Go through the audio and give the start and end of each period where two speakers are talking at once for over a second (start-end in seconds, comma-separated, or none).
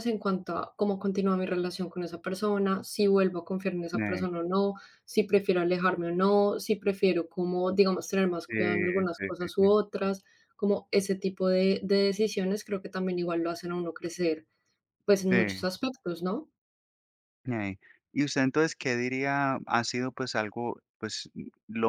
none